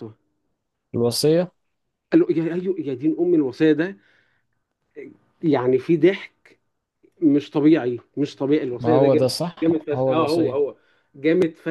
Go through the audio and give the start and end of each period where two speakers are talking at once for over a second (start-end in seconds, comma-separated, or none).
8.8-10.6